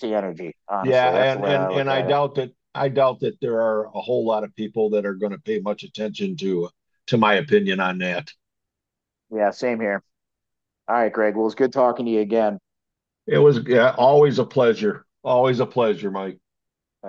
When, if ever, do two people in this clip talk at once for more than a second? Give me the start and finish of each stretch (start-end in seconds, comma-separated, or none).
0.8-2.2